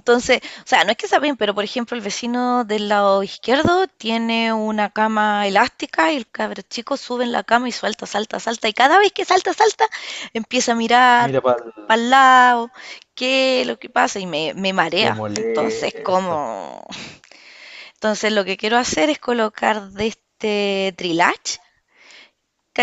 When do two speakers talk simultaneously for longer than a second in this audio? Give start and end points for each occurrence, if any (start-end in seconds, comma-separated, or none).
15.0-16.4